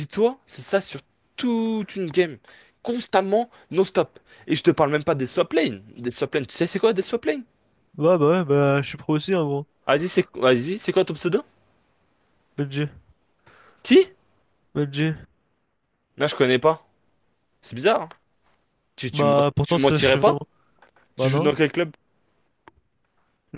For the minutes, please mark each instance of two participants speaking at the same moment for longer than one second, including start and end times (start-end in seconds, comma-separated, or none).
19.1-20.4